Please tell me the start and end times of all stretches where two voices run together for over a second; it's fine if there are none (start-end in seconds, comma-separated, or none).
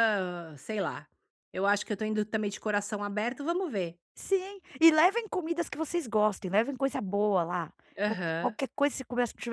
none